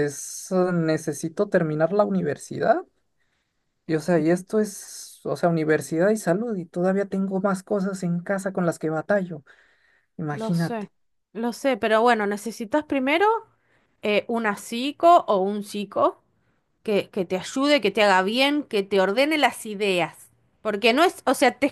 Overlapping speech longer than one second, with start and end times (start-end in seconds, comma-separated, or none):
none